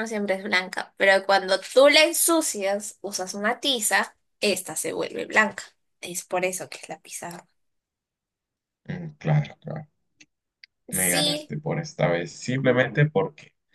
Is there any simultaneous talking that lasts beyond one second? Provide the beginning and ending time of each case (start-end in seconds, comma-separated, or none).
none